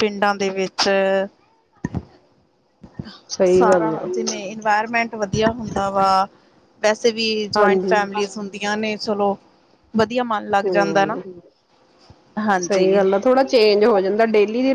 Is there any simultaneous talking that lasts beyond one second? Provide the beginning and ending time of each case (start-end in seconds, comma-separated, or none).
none